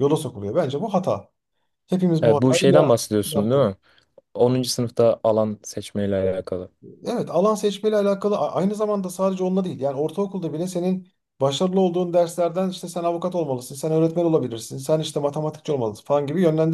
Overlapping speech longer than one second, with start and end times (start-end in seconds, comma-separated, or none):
2.2-3.7